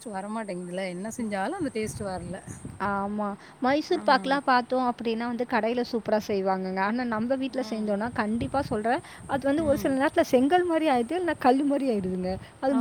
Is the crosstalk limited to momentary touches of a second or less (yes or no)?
yes